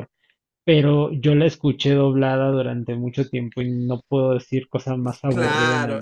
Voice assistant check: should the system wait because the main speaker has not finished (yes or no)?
no